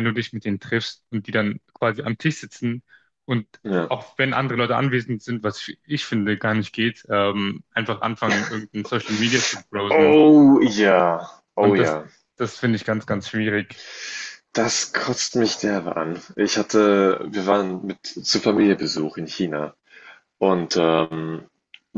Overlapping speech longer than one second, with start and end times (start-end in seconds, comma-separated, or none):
none